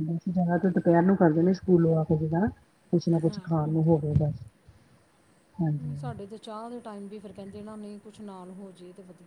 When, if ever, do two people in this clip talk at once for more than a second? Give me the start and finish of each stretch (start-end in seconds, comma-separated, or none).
none